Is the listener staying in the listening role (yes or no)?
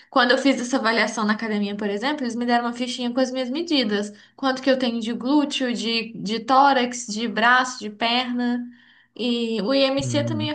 yes